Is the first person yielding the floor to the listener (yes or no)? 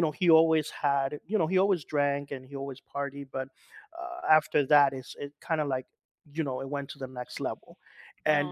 no